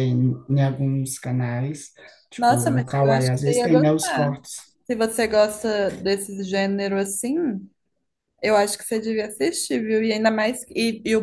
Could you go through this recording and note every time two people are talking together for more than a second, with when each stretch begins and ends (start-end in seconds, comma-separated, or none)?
2.4-4.4